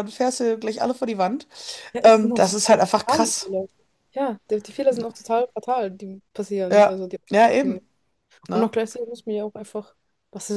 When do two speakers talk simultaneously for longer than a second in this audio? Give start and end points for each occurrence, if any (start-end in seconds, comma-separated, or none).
2.0-3.5